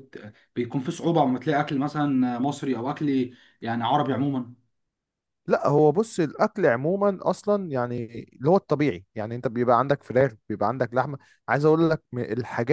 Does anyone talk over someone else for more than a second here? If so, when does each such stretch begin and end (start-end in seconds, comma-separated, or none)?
none